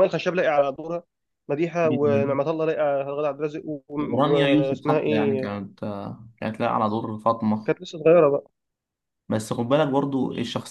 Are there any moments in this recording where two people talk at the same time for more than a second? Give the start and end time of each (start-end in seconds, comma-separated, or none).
4.2-5.5